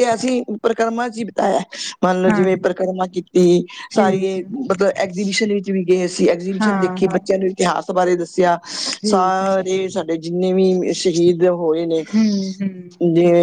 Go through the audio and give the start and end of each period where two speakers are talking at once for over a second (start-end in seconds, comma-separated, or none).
none